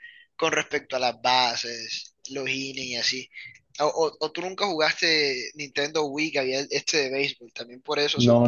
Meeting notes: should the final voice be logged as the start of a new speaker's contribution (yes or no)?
yes